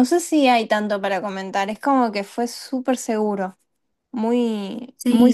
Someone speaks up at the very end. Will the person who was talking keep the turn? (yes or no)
no